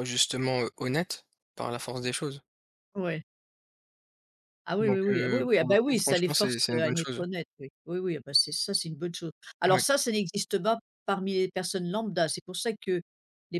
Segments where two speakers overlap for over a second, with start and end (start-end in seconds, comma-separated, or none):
4.8-7.2